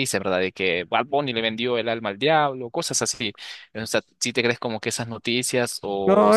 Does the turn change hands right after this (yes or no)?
yes